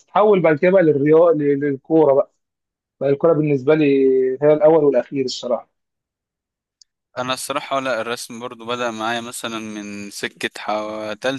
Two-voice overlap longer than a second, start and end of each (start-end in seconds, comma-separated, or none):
none